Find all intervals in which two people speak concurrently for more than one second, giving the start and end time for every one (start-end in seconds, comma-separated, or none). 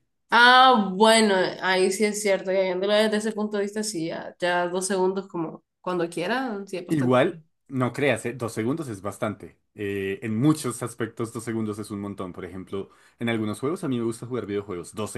none